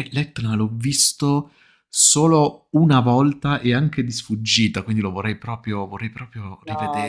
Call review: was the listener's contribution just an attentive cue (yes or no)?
no